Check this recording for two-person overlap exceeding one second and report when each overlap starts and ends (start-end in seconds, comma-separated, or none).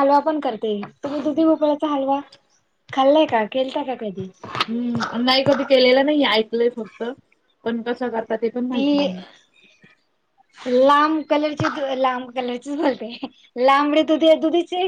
none